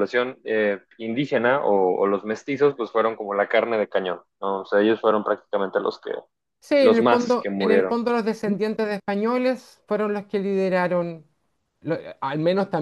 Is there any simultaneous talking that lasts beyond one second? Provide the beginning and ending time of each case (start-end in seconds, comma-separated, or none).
6.8-8.0